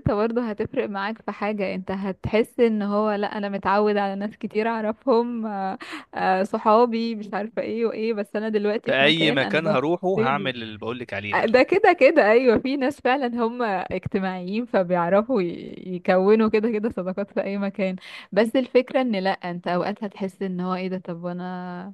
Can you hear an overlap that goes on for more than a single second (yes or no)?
yes